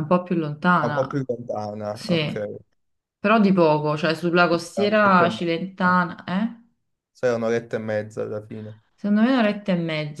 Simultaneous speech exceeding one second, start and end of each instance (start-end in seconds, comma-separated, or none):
4.7-6.0